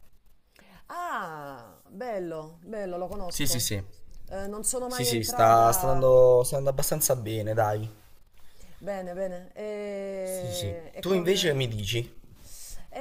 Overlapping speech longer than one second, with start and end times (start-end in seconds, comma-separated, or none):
4.8-6.1, 10.2-11.6